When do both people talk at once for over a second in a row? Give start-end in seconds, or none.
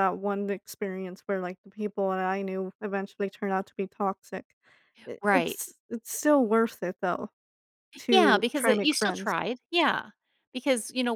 8.1-9.3